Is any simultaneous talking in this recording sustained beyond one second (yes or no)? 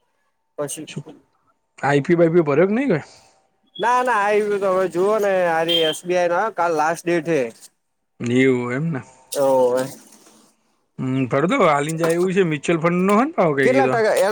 no